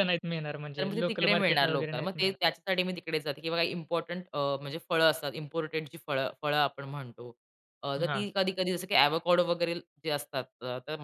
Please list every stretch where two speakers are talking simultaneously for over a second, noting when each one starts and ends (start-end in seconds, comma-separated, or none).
0.8-2.4